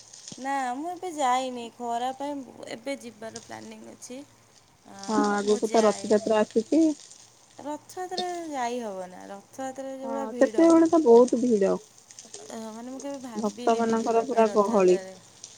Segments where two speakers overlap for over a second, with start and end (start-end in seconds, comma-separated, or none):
13.4-15.0